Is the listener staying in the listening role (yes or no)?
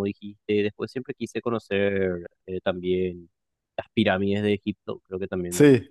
yes